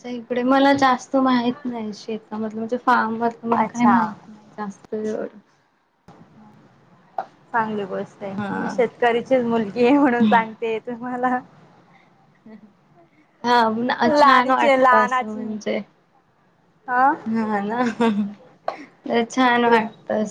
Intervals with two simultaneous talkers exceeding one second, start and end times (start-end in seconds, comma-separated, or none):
14.2-15.4